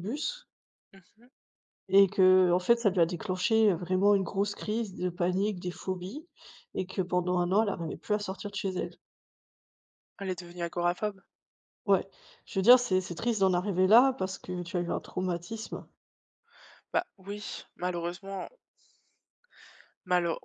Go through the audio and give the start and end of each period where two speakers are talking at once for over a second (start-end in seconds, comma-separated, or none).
none